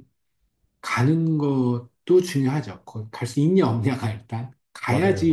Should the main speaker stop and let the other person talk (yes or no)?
no